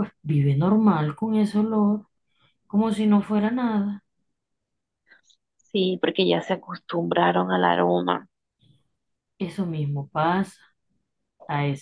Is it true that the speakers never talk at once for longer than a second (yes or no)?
yes